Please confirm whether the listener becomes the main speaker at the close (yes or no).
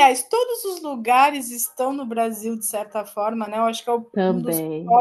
no